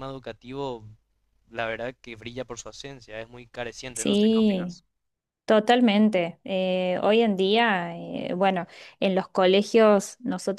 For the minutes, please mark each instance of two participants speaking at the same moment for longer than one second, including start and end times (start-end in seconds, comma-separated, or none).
none